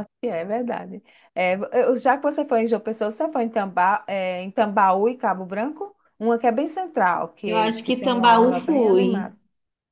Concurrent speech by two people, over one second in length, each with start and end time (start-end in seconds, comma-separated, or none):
7.5-9.3